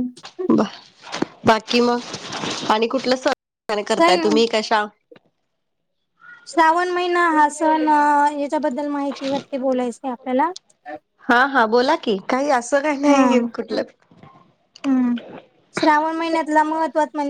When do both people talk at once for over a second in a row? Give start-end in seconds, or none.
none